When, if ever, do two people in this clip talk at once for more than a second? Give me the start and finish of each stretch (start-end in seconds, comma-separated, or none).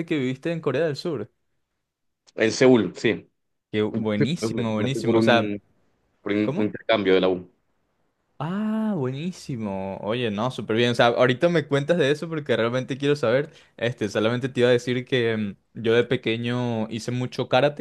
4.2-5.5